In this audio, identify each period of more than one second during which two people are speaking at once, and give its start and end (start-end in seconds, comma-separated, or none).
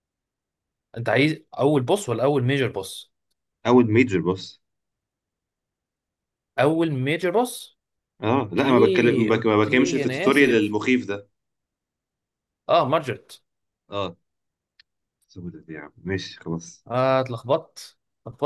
8.5-10.8